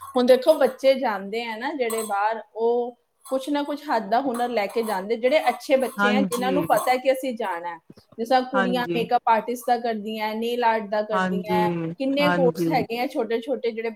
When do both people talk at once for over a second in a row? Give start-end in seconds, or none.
11.1-12.8